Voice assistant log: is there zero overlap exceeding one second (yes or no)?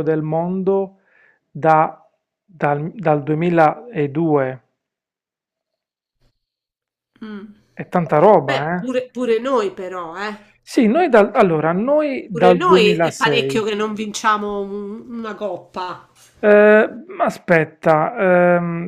no